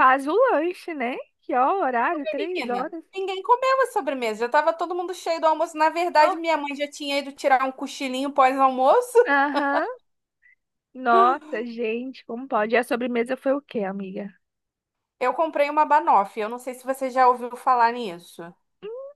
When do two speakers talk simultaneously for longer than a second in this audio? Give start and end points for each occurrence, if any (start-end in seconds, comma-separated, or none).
none